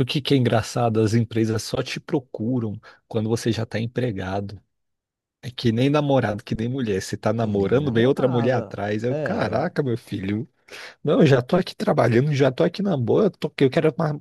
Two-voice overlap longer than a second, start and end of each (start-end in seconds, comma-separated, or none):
7.3-9.7